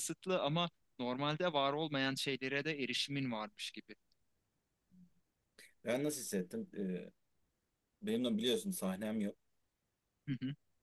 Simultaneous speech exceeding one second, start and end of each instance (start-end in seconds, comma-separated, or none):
none